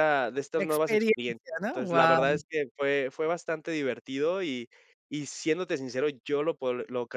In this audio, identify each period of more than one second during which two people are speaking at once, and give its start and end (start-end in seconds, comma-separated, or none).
0.5-2.4